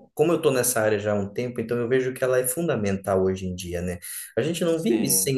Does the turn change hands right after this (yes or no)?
no